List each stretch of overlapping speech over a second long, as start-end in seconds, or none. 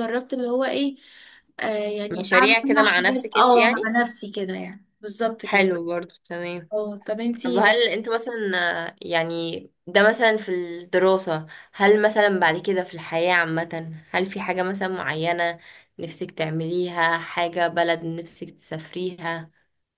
2.1-3.9